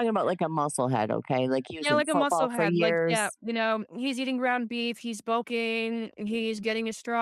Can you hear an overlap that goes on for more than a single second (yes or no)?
yes